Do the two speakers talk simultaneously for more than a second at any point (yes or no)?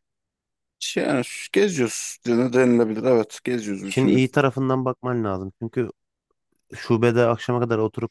no